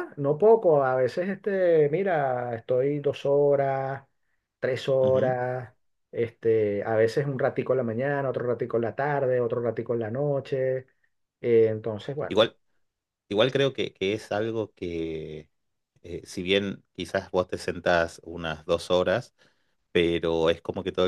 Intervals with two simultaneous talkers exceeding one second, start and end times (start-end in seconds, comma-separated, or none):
none